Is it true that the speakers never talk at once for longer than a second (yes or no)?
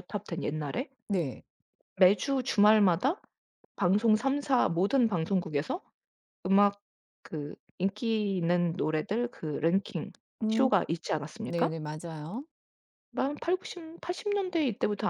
yes